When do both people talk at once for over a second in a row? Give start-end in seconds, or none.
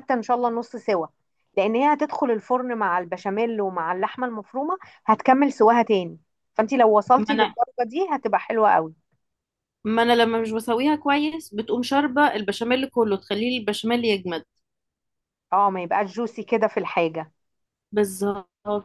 none